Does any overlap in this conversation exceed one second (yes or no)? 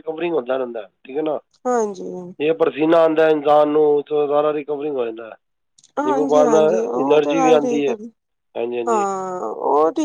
yes